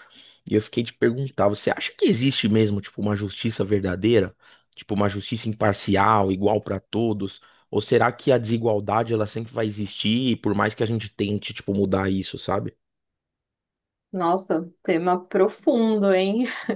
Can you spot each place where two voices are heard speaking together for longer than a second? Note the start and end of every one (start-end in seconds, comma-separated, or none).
none